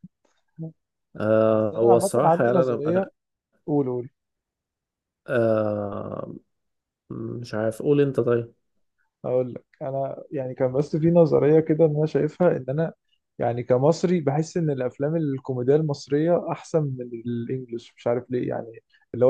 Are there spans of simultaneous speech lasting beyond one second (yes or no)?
yes